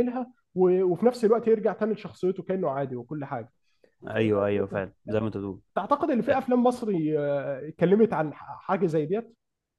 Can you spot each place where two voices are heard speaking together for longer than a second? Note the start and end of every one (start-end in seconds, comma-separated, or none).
none